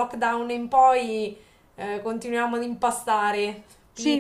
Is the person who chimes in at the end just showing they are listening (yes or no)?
no